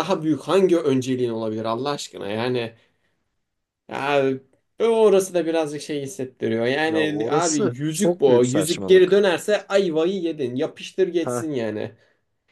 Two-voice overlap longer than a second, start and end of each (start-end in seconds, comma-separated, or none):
6.8-9.3